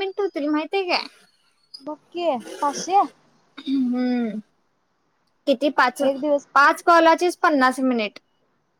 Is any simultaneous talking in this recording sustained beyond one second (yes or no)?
no